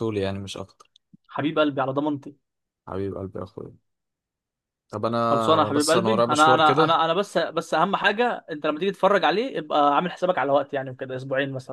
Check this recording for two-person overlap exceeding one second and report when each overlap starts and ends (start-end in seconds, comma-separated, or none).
5.3-7.0